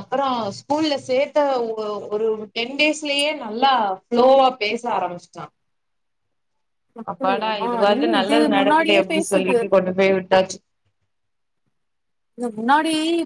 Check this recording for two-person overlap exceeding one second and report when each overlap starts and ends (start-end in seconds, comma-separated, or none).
7.1-9.6